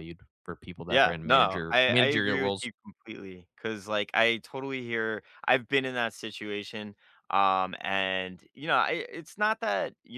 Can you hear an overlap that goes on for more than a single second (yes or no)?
yes